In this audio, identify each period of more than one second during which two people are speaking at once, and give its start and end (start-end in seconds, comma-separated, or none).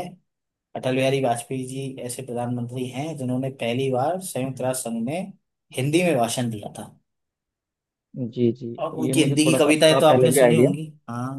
8.8-10.7